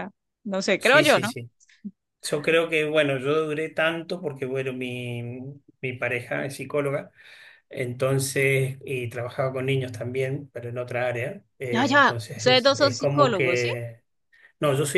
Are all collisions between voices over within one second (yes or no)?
no